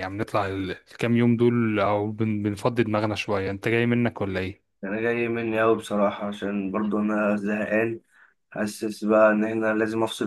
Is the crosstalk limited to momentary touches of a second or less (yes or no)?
yes